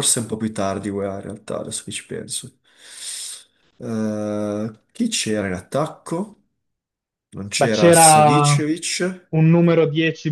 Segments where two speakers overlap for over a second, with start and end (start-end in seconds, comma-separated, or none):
none